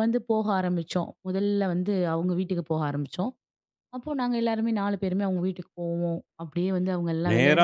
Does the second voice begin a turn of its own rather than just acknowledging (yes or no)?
yes